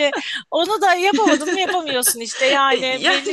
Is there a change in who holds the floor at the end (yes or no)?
no